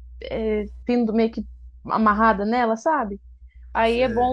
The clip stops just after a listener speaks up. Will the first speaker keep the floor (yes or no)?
yes